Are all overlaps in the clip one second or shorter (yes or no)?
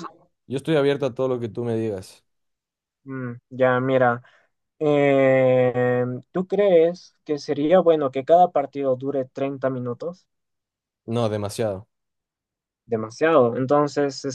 yes